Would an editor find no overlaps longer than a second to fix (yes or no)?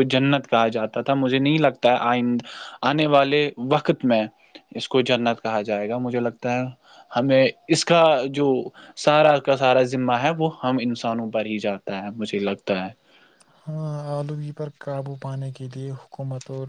yes